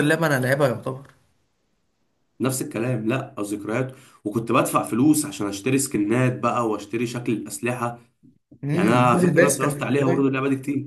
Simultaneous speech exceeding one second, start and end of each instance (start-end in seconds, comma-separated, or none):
8.7-10.3